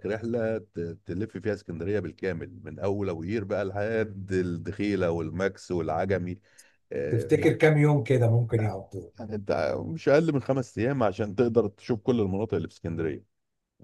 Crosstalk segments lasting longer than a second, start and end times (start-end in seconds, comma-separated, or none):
none